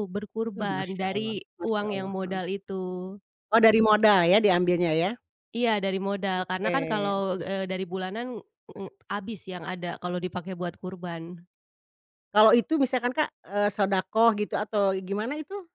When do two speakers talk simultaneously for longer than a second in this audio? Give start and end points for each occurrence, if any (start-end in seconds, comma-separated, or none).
0.6-2.4